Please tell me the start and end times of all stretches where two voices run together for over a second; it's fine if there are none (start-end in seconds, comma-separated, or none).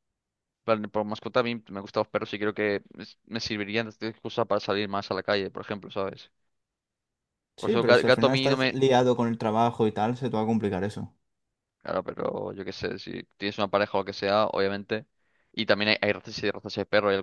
7.6-8.8